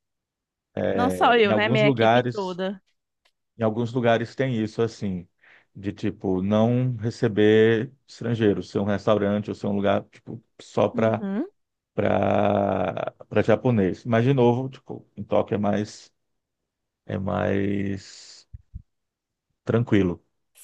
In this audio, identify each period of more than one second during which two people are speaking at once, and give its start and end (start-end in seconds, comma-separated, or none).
1.0-2.6